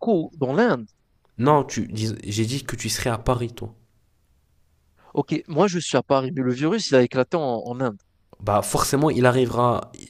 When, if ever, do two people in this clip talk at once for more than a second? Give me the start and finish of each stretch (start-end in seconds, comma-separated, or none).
none